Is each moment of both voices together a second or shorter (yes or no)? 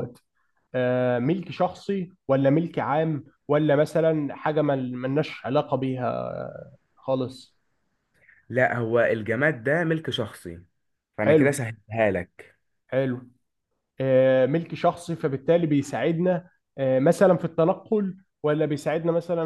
yes